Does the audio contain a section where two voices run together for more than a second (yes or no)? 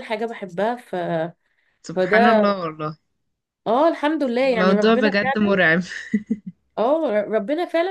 yes